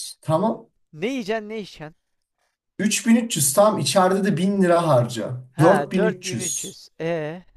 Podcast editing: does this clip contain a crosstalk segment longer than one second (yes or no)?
yes